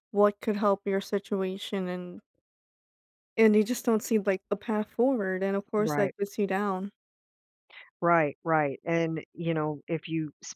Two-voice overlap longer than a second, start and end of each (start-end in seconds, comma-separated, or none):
none